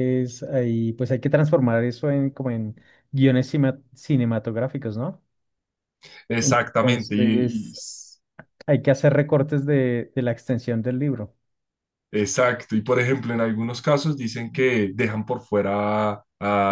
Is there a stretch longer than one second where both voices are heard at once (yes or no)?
yes